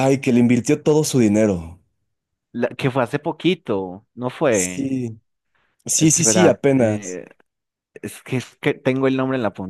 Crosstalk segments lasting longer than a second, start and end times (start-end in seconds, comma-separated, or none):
5.9-7.2